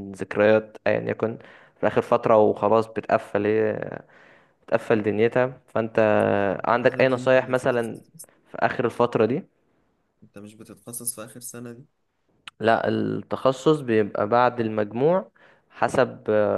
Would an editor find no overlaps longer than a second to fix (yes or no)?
no